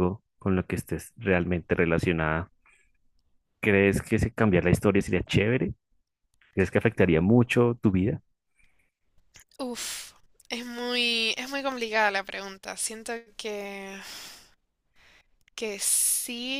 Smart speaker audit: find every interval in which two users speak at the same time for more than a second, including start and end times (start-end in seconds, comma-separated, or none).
none